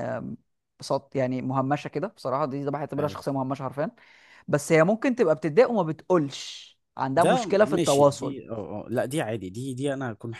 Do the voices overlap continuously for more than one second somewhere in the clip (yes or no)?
yes